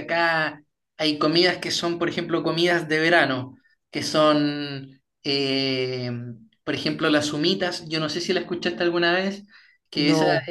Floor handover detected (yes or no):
no